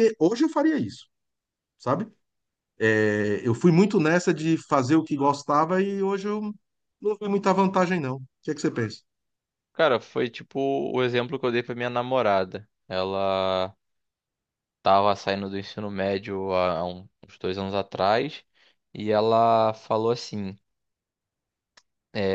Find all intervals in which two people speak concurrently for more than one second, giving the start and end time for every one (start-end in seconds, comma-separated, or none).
none